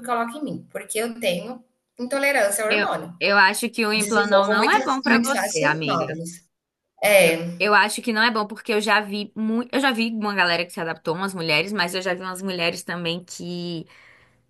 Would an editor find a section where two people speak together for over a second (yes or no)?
yes